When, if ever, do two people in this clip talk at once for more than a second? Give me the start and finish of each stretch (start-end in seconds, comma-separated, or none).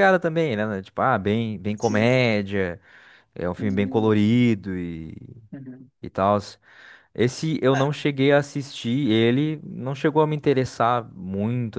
none